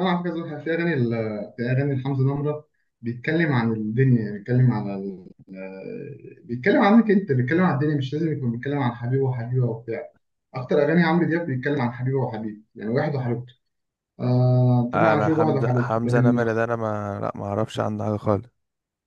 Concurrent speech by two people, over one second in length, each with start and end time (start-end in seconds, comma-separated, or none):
14.9-16.4